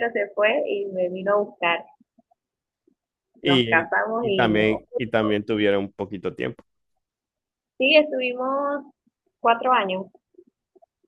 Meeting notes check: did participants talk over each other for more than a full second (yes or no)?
yes